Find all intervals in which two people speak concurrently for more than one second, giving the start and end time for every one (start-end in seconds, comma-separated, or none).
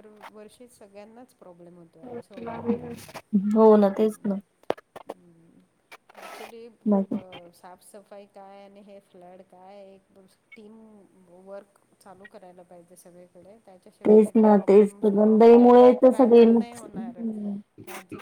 14.1-17.2